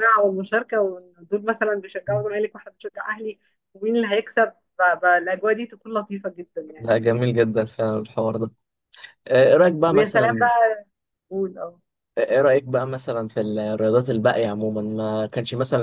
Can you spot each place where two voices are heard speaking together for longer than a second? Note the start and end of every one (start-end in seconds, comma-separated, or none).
none